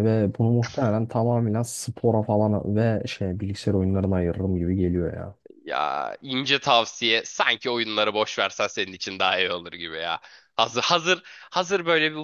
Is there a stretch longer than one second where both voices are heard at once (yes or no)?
no